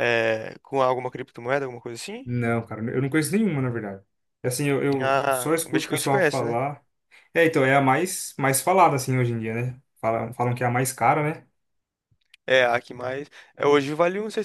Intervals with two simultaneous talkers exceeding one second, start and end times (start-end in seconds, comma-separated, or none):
5.0-6.6